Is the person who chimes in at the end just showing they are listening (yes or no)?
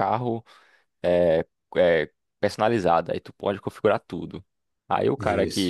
yes